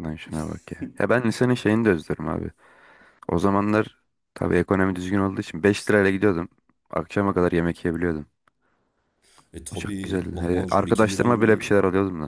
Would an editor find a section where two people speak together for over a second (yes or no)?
yes